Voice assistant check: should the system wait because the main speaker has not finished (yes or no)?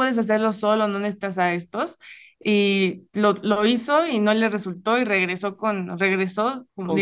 yes